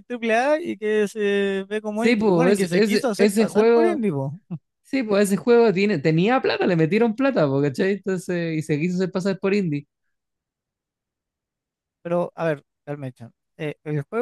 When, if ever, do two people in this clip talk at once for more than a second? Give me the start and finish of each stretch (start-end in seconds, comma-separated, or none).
1.9-4.0